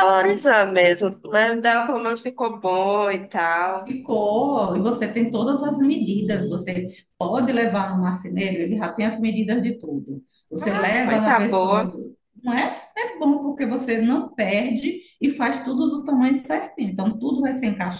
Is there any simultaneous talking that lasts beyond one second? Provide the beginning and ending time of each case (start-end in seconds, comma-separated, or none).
10.6-12.0